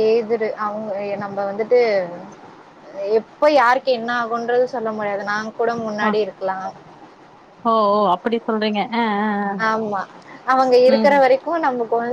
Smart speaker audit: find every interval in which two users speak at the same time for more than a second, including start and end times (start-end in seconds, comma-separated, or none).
none